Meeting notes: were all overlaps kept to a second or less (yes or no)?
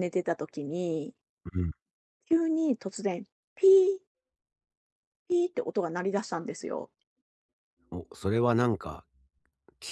yes